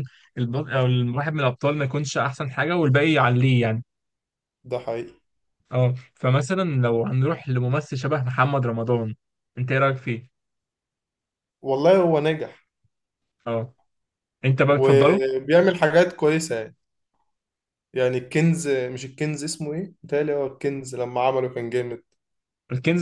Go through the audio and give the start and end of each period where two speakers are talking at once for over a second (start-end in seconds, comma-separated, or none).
none